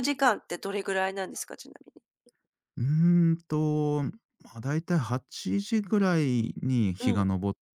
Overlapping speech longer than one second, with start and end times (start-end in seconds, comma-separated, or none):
none